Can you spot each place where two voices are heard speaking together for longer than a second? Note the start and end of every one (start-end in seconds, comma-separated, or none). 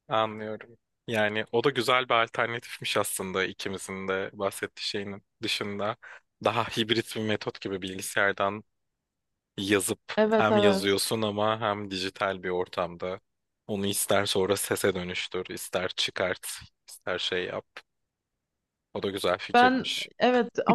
none